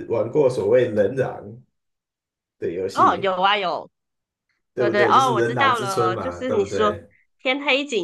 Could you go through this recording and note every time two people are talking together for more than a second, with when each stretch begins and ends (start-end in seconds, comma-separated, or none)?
4.8-7.0